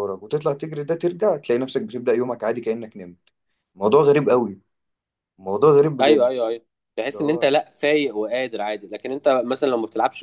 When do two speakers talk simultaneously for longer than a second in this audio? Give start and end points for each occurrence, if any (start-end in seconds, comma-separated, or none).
none